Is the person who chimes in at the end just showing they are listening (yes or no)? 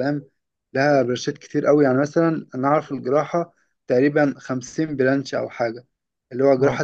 yes